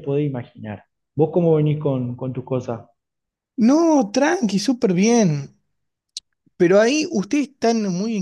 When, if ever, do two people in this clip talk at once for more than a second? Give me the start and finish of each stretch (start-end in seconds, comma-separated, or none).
none